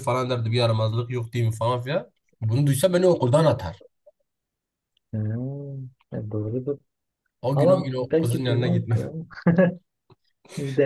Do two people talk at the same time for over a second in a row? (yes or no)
yes